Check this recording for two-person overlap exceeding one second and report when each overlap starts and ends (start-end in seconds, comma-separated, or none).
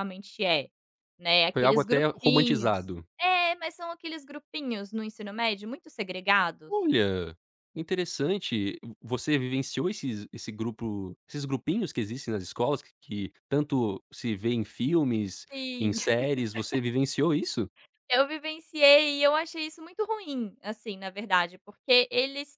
1.5-3.1